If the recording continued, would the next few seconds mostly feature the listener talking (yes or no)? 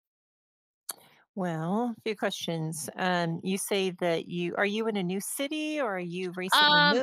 yes